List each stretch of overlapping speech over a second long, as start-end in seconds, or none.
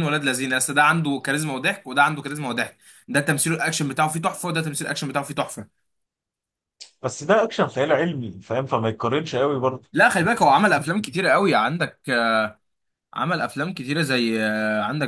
none